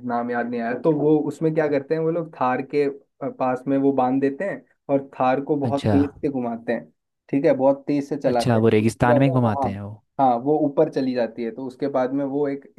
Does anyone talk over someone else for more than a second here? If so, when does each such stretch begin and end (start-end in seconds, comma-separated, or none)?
8.2-9.7